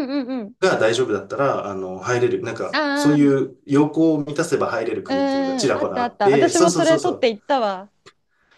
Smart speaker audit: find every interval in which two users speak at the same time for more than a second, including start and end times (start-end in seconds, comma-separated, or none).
5.1-7.3